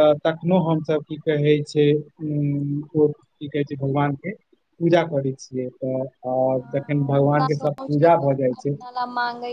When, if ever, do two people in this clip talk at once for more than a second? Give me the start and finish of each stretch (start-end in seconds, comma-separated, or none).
6.6-8.7